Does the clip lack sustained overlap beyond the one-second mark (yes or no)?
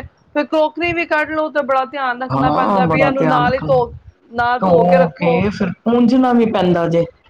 no